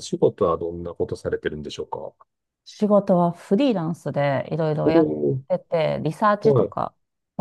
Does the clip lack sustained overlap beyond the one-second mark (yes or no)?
yes